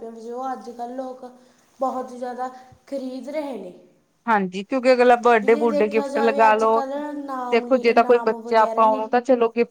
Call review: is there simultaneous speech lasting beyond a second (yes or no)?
yes